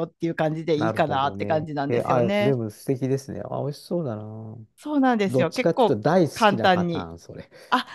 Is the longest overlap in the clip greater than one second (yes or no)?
yes